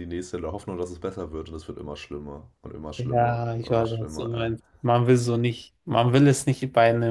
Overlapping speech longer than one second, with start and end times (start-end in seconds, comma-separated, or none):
3.0-4.5